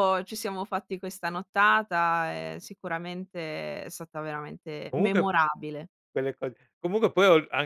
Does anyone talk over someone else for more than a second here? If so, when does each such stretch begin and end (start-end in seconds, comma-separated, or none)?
none